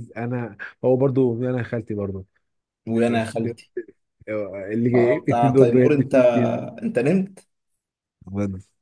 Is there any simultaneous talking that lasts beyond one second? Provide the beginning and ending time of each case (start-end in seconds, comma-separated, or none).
5.0-6.2